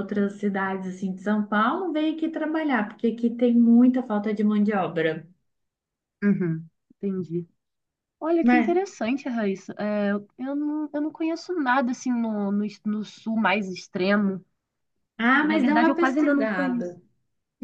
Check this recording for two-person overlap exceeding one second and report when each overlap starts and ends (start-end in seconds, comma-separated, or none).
15.4-16.9